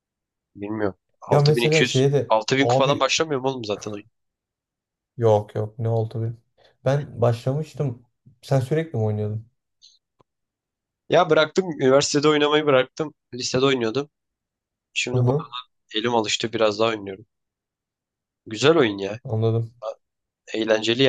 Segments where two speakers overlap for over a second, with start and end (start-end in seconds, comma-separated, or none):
1.3-3.1